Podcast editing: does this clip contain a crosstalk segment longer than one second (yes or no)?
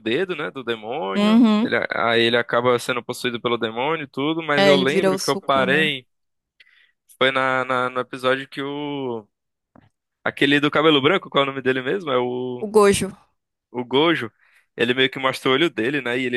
yes